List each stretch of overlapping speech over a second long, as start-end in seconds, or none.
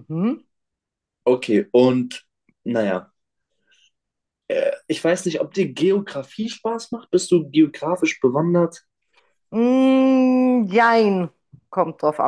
none